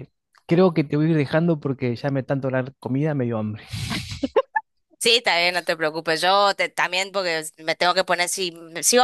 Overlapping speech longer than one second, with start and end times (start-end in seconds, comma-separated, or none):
none